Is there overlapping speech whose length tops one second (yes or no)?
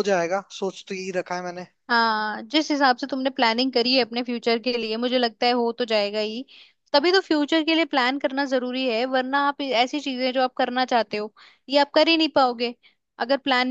no